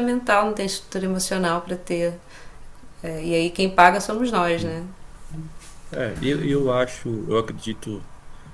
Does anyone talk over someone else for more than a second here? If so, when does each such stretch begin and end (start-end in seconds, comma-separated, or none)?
none